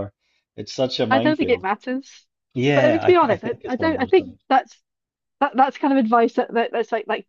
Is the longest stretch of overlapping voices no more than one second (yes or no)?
no